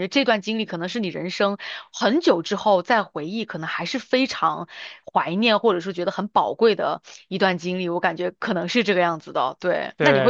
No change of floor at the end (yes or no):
yes